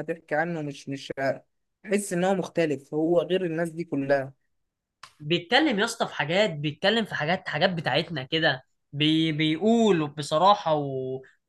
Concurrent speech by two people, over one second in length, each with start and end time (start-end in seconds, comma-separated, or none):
none